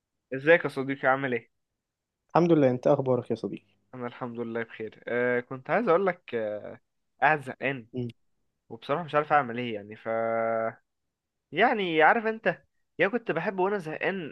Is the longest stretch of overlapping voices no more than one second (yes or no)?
yes